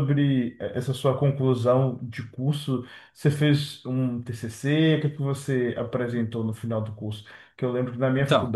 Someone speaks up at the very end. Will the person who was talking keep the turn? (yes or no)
yes